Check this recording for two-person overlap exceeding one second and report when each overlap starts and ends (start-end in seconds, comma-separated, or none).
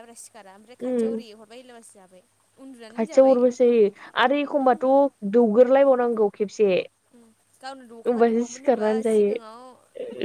8.1-9.6